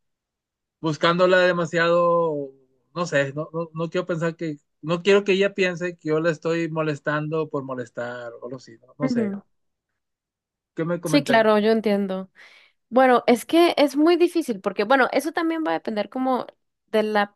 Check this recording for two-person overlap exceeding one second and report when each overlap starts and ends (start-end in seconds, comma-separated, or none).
none